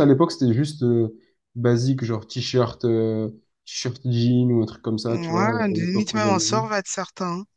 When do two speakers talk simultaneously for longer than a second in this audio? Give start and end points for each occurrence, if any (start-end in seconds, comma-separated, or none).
5.1-6.6